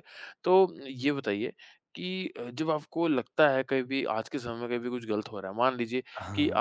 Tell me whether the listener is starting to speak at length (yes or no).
no